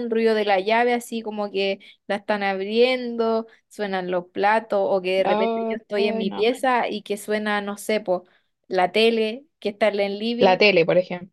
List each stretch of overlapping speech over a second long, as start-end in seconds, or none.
5.2-6.5